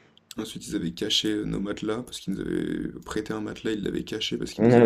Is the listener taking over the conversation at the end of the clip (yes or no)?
yes